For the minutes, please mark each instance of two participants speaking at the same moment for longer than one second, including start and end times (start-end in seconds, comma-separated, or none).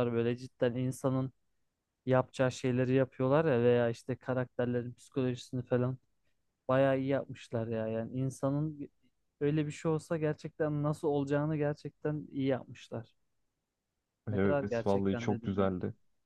14.3-15.7